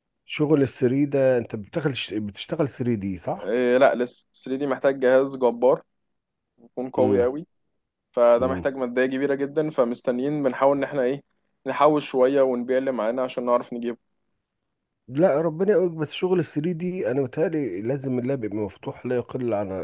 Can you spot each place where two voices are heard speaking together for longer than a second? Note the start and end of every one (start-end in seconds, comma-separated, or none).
none